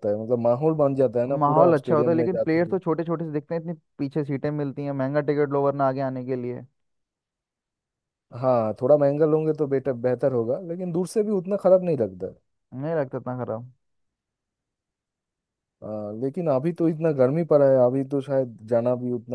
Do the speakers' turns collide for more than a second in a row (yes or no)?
yes